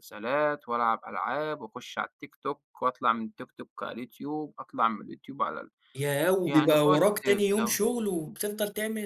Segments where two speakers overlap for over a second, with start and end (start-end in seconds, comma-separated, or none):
6.5-7.8